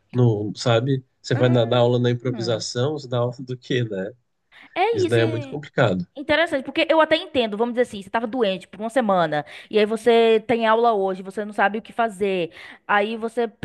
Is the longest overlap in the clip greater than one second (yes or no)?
yes